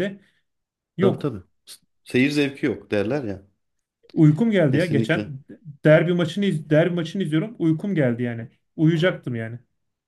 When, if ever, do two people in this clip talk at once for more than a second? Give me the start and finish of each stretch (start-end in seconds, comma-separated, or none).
none